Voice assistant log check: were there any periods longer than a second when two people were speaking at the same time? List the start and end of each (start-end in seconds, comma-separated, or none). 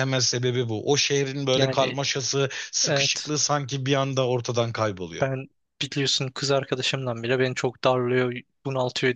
none